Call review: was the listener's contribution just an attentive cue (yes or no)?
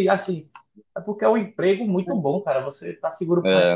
yes